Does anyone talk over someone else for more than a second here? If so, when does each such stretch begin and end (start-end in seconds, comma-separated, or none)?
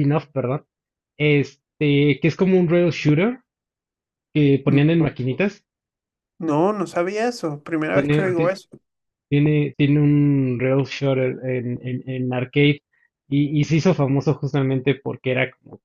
none